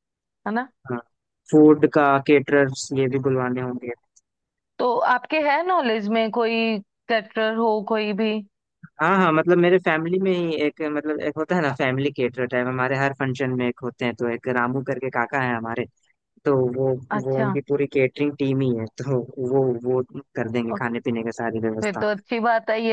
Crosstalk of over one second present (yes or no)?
no